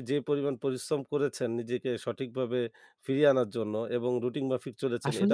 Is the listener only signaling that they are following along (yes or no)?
no